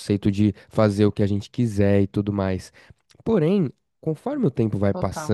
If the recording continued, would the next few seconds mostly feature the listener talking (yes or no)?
no